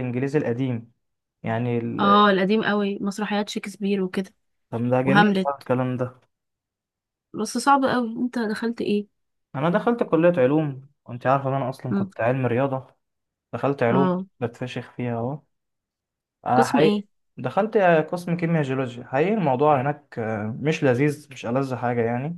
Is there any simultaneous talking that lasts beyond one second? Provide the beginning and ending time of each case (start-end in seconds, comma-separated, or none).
none